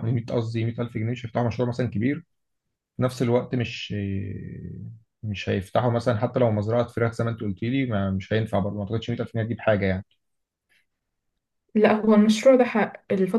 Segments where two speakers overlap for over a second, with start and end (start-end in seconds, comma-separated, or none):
none